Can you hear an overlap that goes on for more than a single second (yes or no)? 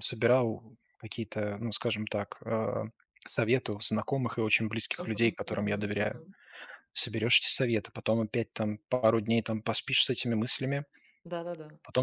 yes